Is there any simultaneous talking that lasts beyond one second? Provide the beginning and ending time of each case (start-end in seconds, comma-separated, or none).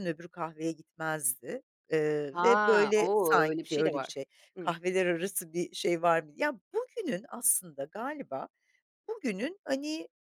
2.3-4.7